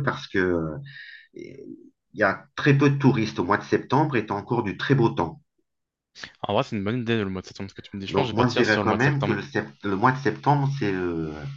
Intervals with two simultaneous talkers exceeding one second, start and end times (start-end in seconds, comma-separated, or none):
8.1-9.4